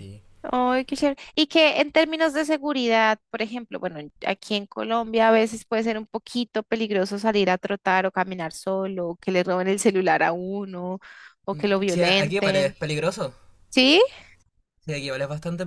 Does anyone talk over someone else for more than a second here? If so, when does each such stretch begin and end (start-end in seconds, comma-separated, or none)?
11.5-12.8